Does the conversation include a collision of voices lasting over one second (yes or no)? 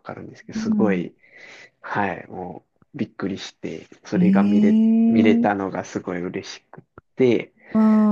yes